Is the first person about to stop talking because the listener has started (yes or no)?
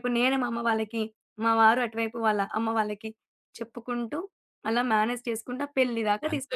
yes